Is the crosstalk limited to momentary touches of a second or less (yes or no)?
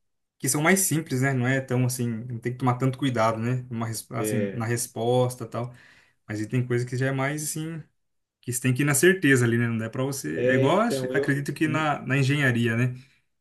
no